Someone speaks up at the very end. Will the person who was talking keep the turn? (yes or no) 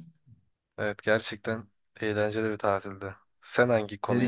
no